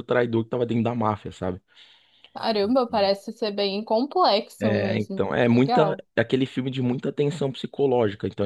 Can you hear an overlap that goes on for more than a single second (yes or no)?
yes